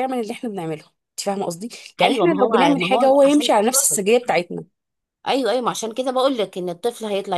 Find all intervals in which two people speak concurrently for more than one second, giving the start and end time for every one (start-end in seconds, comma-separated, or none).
2.0-3.5